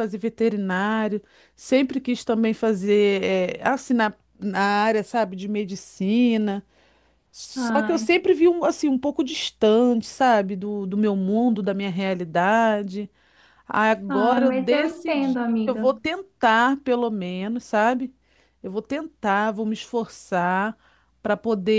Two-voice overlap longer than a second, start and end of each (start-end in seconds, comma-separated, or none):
14.1-15.9